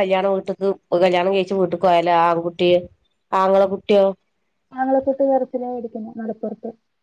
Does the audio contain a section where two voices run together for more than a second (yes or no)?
no